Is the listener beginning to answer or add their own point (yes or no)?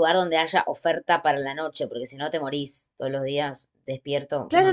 yes